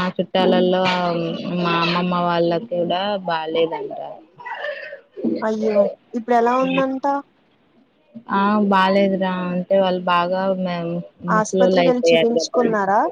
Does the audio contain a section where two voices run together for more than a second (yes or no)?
yes